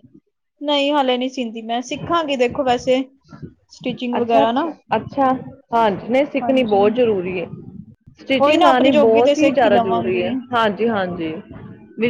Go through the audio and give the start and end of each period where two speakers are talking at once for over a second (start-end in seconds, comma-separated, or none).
8.4-10.3